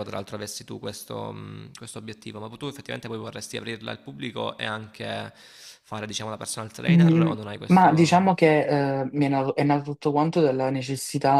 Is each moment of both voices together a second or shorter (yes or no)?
no